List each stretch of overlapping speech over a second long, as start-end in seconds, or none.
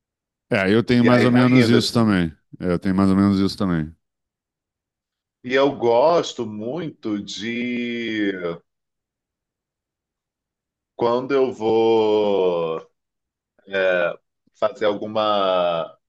1.0-2.2